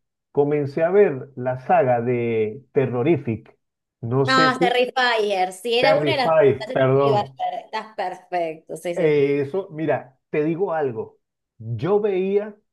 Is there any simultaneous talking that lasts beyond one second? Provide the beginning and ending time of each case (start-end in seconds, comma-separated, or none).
5.8-7.3